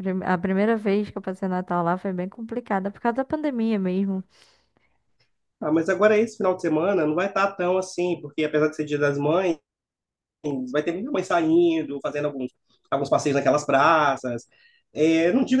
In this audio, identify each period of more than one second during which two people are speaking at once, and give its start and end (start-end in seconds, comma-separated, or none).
none